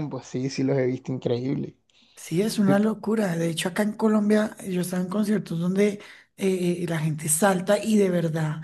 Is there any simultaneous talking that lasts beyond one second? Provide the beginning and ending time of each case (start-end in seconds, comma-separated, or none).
none